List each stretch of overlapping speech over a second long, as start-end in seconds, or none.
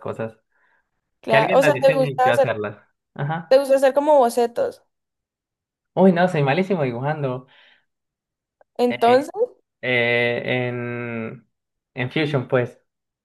1.3-2.6